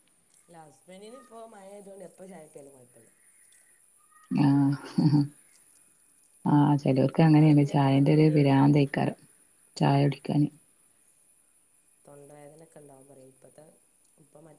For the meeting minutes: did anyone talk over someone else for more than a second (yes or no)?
yes